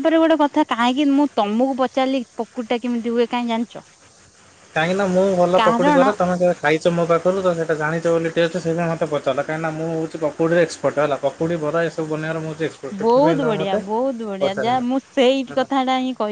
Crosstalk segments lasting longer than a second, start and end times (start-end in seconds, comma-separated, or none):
none